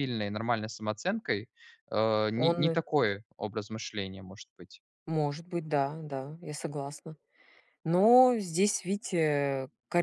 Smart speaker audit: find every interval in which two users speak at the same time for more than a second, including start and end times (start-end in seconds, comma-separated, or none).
none